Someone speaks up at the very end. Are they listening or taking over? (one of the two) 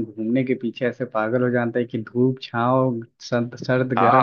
taking over